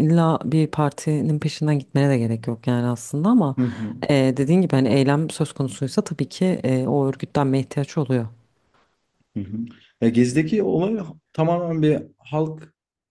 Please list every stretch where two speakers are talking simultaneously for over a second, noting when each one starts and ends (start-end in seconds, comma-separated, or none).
none